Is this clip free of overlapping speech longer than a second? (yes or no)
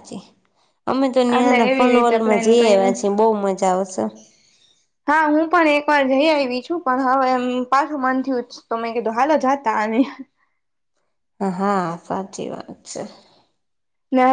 no